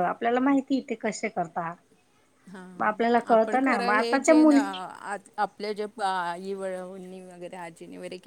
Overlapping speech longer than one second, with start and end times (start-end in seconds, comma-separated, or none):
3.3-4.7